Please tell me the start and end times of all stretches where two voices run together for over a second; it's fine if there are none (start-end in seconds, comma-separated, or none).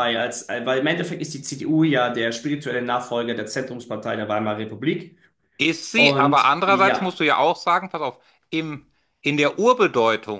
6.0-7.2